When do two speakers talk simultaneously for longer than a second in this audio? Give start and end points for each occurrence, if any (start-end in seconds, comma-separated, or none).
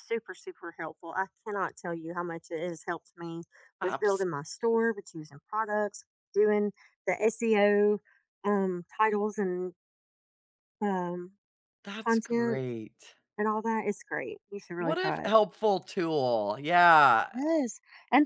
none